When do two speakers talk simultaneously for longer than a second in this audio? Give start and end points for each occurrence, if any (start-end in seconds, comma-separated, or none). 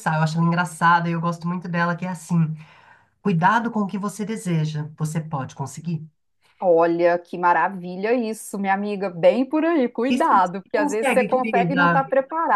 10.1-12.0